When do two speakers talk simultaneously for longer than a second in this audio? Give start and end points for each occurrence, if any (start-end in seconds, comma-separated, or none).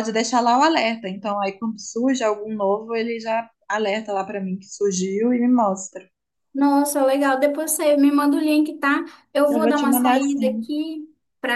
9.5-10.7